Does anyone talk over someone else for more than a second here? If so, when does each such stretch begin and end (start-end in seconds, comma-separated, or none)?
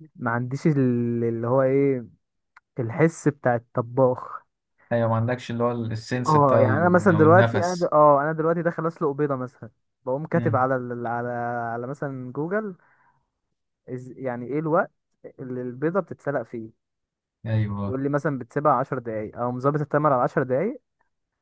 6.3-7.9